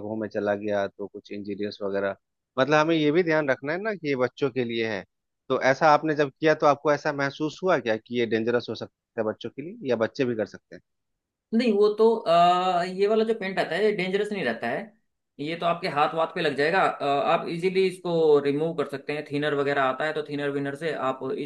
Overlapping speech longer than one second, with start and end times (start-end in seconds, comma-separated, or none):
none